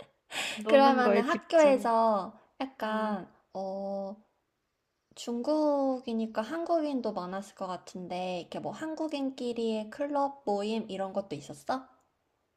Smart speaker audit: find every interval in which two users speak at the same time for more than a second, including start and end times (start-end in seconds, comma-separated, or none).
0.7-1.9